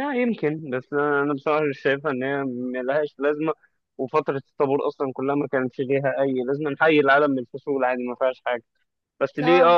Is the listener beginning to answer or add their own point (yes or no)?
no